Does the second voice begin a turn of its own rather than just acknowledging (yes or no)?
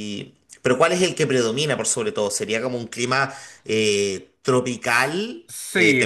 yes